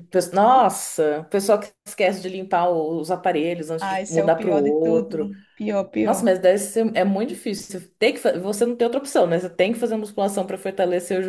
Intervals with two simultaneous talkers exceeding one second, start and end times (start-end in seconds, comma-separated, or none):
3.8-5.2